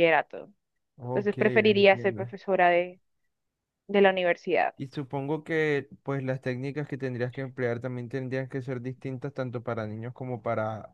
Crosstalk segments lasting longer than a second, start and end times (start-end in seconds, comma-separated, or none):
1.1-2.3